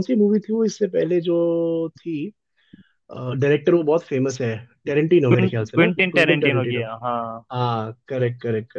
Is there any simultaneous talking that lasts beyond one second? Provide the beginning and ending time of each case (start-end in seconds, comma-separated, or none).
5.3-6.8